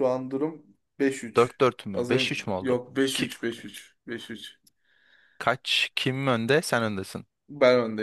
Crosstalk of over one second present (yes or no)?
yes